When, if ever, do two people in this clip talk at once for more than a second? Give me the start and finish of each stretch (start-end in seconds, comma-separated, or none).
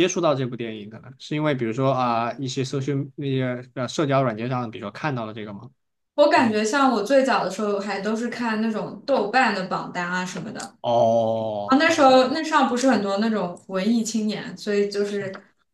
none